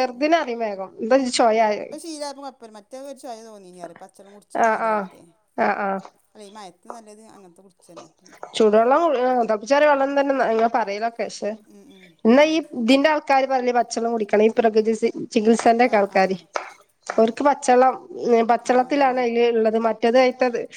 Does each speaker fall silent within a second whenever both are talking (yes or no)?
yes